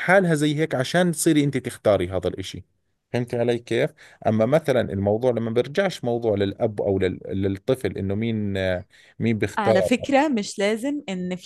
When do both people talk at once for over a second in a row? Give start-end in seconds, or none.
none